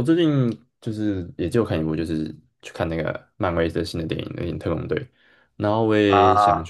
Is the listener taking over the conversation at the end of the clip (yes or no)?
no